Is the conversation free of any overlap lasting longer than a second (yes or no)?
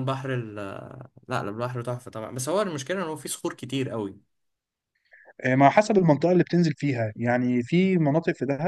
yes